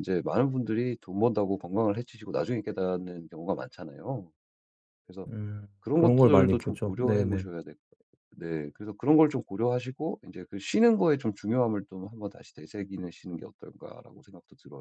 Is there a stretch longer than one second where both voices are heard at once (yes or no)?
yes